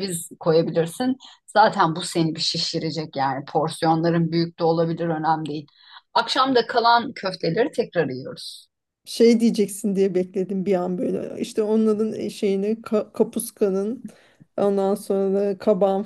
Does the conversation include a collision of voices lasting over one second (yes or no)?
no